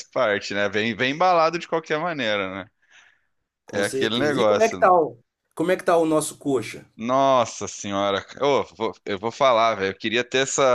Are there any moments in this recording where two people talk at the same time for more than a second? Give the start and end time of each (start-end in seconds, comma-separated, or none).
3.7-4.9